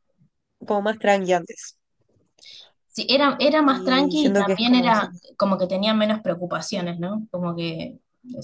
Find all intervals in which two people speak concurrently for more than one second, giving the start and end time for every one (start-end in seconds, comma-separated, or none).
3.6-5.1